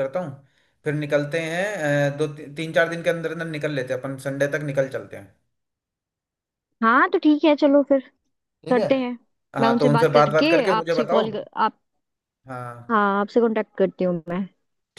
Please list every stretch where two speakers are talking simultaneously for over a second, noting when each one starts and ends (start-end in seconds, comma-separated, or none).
9.6-11.2